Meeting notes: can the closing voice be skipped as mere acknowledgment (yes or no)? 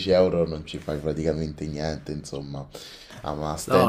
no